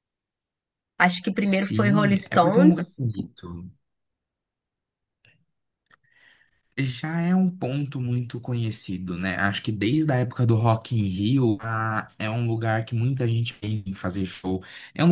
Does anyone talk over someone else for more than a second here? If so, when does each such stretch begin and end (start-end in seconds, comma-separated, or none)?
1.4-2.8